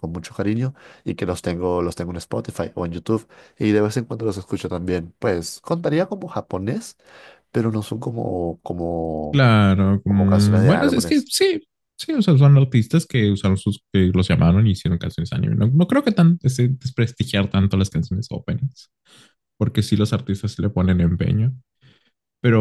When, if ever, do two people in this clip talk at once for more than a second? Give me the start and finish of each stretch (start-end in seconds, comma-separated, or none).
10.0-11.3